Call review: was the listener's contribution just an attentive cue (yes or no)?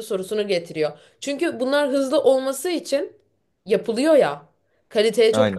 yes